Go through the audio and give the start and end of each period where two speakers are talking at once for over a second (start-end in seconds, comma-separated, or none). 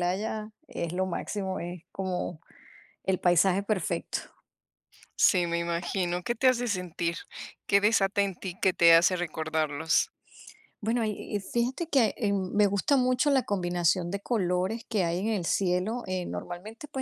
none